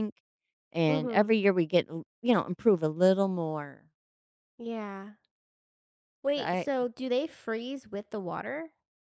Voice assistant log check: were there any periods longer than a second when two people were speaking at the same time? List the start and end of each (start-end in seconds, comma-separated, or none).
none